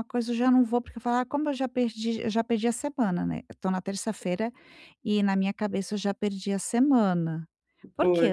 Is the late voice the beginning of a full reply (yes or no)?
no